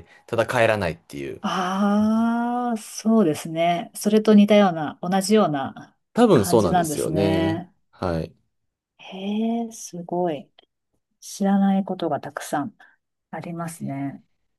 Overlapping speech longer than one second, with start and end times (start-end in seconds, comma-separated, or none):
6.3-7.7